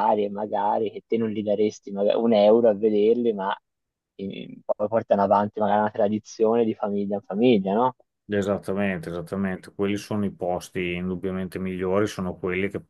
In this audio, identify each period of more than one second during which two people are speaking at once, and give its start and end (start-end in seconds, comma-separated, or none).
none